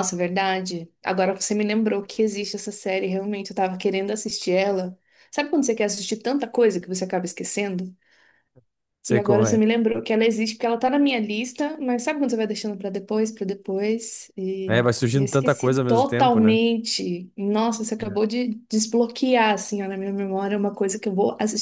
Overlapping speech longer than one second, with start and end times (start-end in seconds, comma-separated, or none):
14.7-16.6